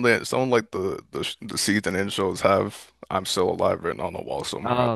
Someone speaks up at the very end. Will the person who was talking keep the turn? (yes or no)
no